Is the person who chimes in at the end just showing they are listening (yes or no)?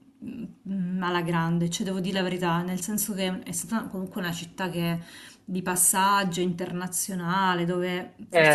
yes